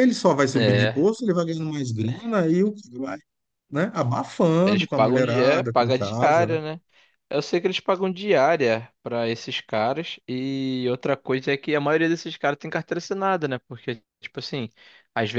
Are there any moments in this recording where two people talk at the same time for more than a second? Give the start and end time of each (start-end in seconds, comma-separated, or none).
4.6-6.6